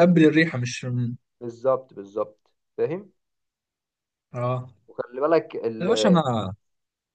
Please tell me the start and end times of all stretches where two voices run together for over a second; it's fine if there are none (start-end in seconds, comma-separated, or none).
none